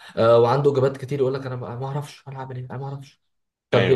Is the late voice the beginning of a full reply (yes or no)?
no